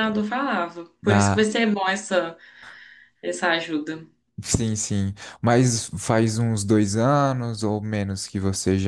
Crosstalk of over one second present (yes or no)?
no